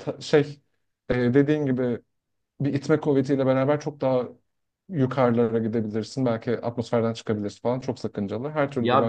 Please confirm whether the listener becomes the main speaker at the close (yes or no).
yes